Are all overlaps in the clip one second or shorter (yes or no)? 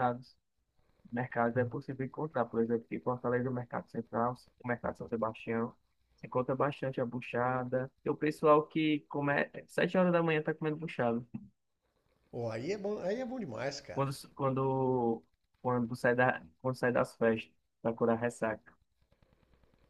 yes